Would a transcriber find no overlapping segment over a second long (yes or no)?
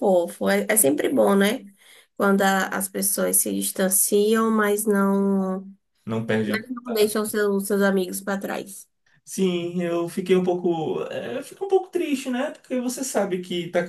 yes